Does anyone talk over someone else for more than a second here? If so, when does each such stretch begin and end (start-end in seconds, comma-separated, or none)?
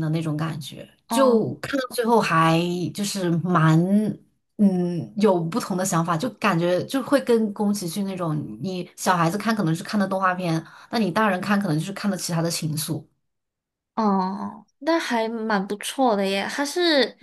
none